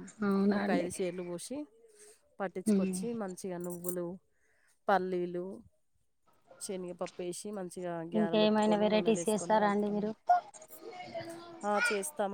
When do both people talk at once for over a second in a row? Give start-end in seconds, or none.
8.2-10.0